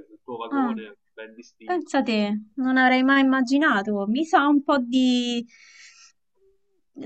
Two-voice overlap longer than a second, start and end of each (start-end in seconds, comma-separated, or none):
none